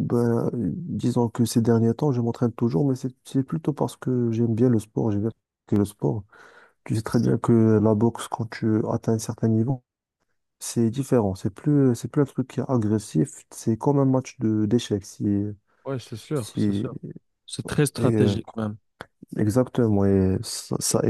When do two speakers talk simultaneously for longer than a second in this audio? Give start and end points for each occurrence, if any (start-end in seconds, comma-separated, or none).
none